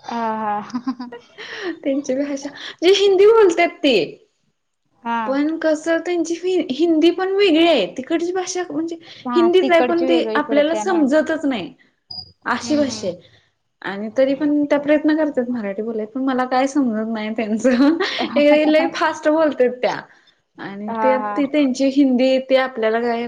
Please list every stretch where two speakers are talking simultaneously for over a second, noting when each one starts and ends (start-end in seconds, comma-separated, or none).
9.3-11.0